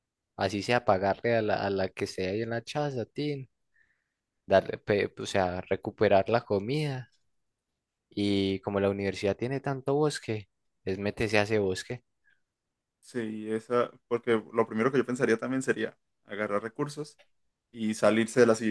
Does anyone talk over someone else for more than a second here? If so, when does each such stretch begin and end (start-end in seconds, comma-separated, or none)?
none